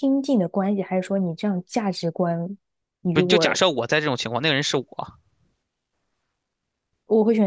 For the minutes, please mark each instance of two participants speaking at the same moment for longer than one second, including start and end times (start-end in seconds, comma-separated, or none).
none